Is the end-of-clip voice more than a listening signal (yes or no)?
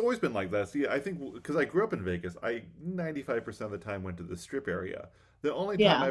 no